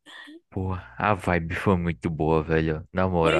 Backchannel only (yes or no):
no